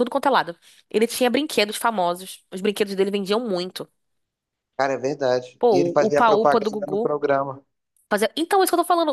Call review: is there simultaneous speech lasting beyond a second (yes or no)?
yes